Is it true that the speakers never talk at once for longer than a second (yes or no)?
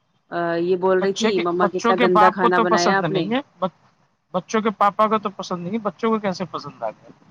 no